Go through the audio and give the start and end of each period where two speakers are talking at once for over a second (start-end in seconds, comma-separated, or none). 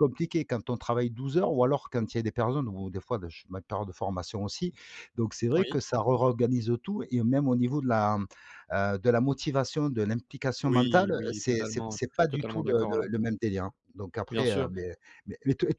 10.6-13.1